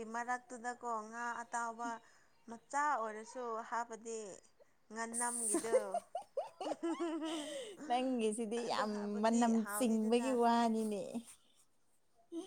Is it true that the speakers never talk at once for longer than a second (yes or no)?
no